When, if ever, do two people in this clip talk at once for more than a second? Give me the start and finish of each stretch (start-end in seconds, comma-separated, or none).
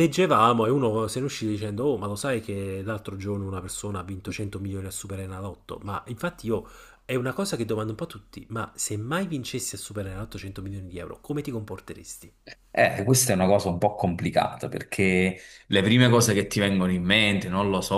none